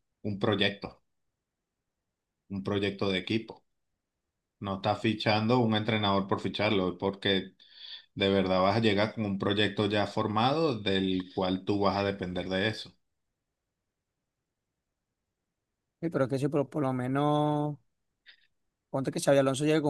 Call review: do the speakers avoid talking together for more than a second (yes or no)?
yes